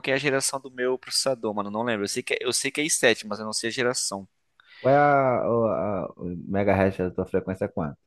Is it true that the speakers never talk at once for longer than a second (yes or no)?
yes